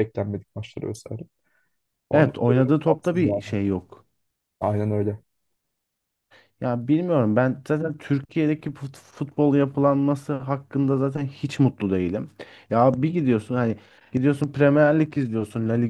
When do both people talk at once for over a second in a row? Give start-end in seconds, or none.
2.1-3.5